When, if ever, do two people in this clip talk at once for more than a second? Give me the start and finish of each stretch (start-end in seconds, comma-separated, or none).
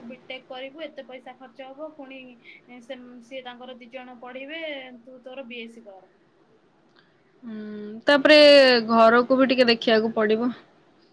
none